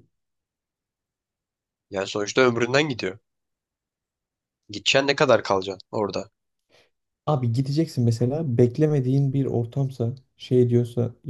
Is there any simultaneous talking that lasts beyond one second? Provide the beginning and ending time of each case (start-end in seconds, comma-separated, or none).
none